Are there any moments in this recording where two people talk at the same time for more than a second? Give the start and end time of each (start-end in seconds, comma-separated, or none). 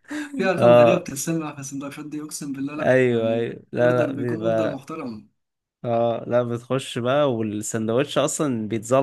2.8-4.8